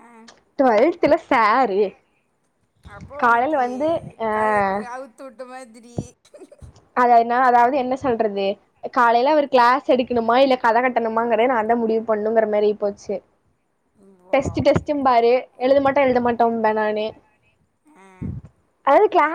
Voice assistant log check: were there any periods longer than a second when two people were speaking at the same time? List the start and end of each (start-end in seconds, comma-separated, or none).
none